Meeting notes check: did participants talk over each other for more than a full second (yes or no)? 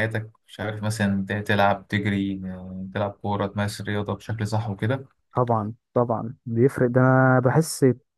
no